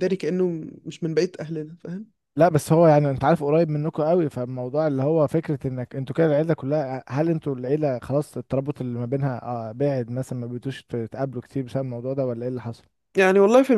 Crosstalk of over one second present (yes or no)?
no